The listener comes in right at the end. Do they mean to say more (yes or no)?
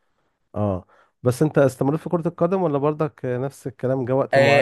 yes